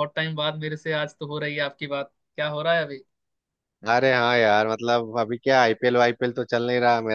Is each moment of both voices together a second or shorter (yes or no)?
yes